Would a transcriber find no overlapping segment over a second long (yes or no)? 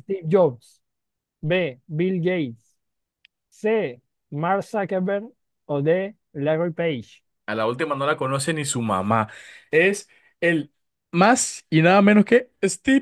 yes